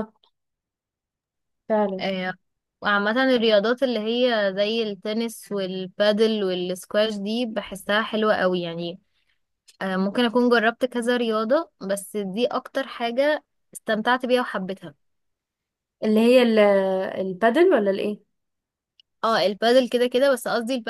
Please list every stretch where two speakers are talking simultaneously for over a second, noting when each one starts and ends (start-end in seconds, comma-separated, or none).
none